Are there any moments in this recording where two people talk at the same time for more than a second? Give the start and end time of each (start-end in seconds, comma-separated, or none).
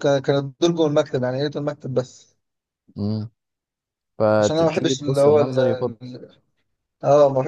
4.4-5.6